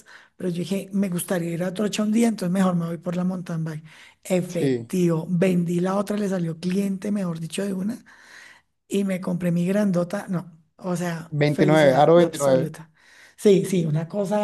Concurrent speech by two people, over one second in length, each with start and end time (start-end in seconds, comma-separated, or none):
11.3-12.7